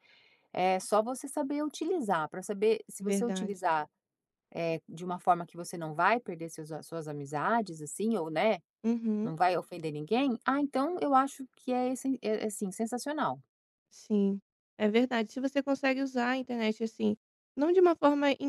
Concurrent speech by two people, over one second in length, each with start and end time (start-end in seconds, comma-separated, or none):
none